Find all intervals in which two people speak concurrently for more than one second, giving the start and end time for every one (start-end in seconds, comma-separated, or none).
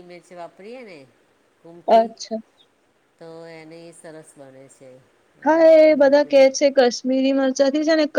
none